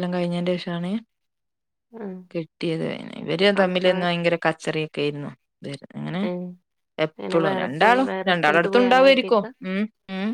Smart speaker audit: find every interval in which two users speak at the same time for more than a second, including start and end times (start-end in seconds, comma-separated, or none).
7.2-9.5